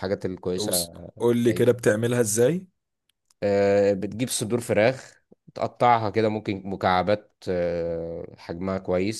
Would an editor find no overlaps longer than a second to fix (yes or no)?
yes